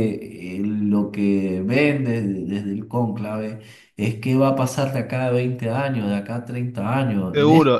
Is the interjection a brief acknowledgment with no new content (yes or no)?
no